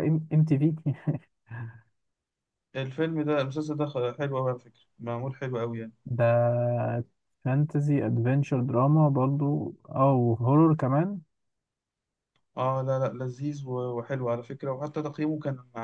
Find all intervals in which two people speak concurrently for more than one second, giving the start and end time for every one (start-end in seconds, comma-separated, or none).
none